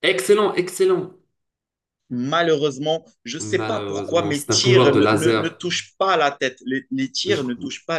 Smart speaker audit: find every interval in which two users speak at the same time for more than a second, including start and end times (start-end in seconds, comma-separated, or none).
3.4-5.6